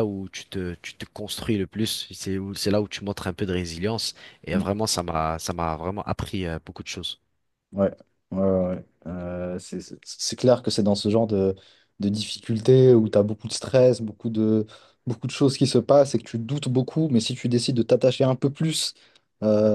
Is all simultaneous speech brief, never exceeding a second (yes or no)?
yes